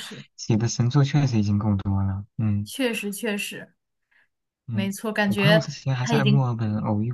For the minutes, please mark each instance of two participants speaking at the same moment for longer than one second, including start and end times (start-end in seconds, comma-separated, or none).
4.7-6.5